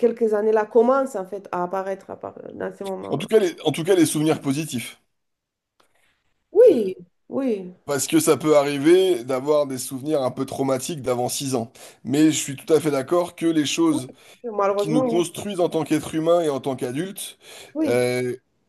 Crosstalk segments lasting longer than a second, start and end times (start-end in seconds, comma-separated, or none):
none